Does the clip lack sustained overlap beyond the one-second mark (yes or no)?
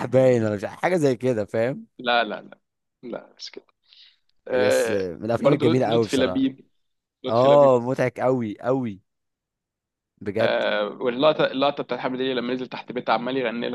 no